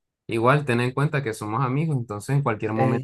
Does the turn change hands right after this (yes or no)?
no